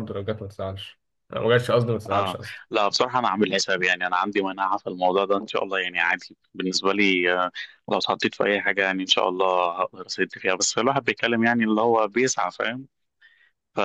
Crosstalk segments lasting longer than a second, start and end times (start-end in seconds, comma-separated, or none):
none